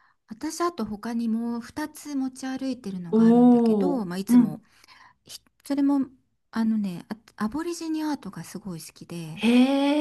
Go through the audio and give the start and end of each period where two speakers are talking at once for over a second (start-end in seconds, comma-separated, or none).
3.1-4.6